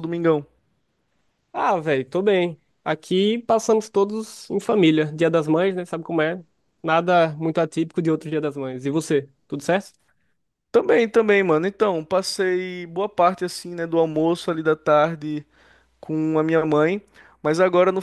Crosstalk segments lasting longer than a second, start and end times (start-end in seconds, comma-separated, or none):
none